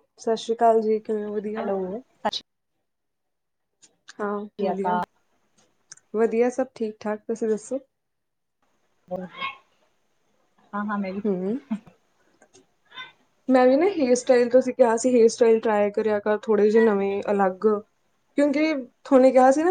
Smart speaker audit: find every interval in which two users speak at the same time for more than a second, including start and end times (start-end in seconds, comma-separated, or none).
none